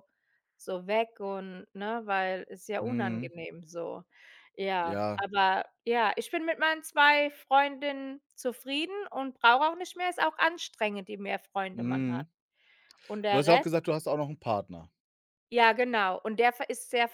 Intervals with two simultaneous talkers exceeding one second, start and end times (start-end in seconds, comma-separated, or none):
none